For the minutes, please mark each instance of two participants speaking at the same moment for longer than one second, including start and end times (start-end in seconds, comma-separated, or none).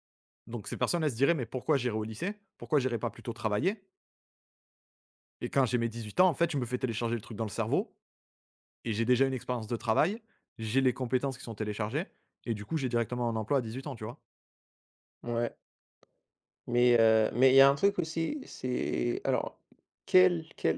none